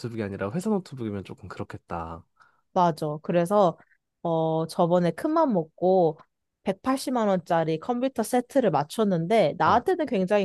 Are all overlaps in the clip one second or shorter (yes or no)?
yes